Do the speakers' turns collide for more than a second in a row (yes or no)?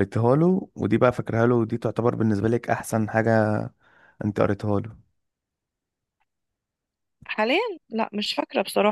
no